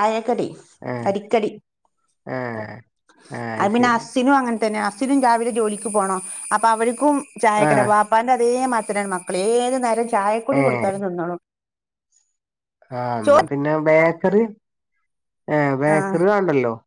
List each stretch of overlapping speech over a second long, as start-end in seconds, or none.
none